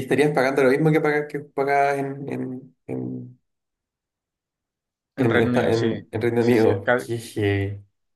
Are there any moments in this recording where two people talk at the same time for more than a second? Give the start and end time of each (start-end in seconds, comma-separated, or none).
5.2-7.1